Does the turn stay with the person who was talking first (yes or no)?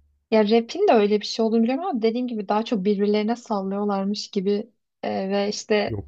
yes